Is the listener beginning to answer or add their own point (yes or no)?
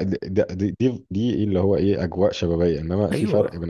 no